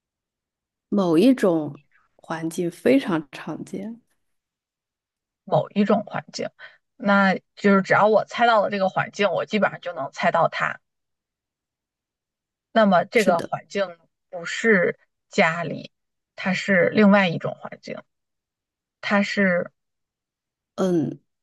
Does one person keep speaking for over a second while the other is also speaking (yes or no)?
no